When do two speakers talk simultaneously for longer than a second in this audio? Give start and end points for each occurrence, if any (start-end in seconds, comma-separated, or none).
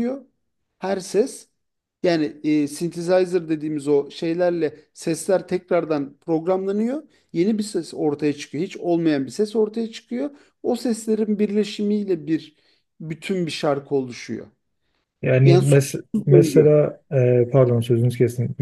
15.4-16.8